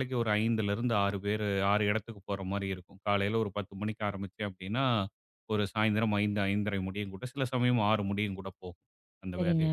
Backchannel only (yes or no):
yes